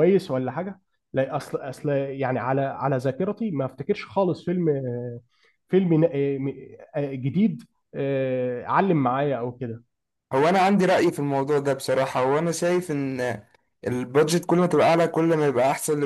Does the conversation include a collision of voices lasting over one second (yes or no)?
no